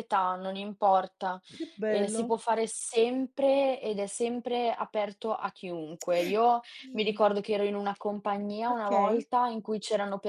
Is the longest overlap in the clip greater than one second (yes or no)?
no